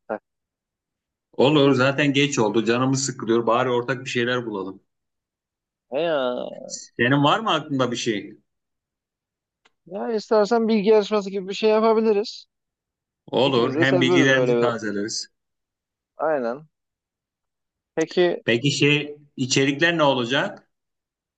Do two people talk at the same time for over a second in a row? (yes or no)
yes